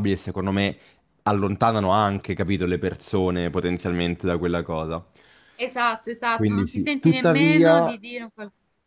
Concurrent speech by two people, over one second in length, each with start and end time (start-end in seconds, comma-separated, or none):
6.3-7.9